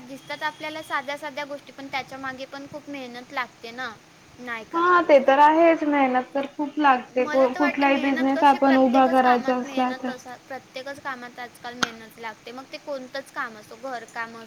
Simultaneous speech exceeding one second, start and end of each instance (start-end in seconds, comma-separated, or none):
7.2-10.1